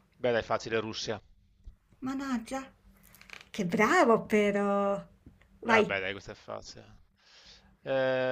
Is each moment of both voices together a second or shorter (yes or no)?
yes